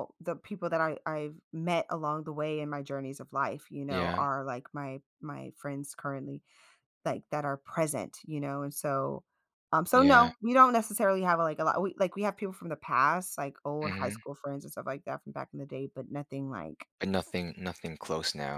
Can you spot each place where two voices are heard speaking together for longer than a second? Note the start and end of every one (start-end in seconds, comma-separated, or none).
none